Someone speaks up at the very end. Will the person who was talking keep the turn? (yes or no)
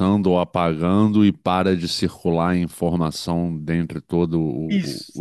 no